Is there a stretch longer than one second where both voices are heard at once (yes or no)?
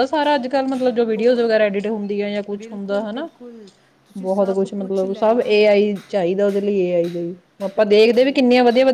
yes